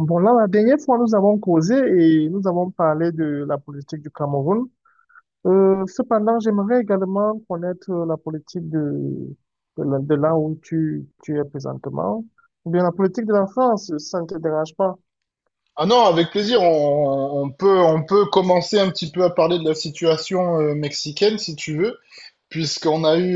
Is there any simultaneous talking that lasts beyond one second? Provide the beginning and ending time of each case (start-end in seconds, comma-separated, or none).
none